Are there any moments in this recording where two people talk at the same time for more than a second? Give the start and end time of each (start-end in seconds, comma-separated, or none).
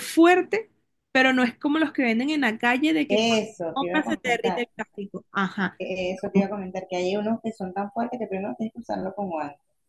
3.1-4.6